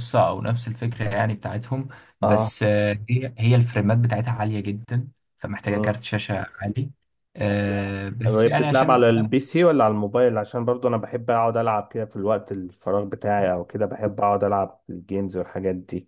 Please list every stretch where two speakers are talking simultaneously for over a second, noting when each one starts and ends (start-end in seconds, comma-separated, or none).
7.7-9.1